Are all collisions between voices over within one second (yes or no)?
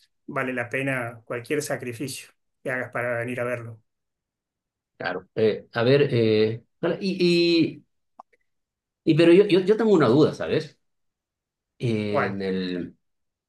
yes